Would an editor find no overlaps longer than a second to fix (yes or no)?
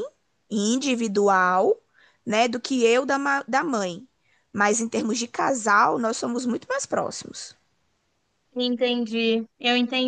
yes